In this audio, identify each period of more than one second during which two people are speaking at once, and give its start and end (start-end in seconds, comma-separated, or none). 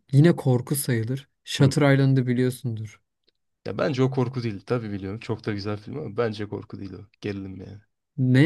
none